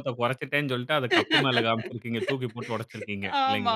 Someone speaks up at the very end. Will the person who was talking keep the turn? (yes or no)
no